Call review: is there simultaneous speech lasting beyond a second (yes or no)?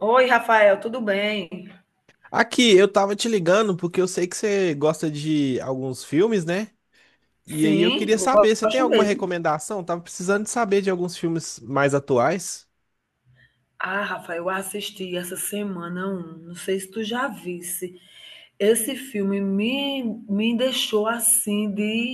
yes